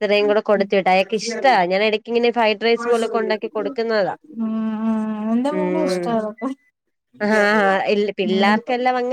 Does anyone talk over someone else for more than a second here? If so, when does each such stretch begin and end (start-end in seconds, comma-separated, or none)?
none